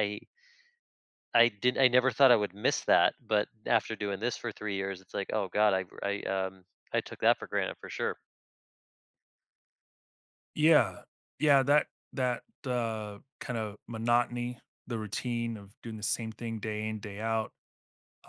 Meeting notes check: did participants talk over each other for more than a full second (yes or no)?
no